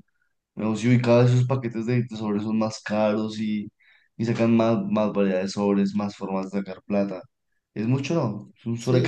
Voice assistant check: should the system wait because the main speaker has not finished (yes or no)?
no